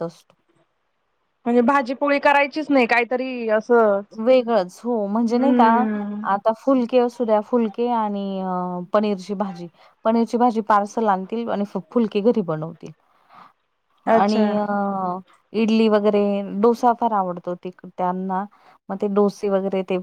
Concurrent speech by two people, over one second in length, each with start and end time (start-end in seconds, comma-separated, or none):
none